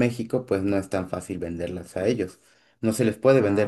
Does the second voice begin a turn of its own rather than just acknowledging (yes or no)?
no